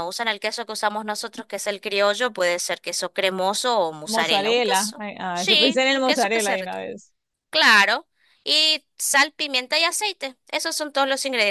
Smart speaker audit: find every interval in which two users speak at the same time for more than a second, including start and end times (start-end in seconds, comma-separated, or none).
4.0-6.9